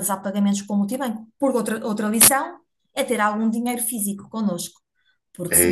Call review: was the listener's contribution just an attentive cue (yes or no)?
no